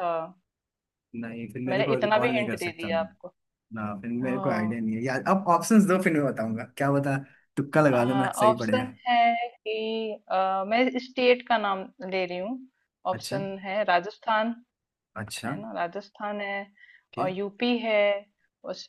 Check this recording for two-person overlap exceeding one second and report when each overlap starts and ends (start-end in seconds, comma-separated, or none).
1.7-3.3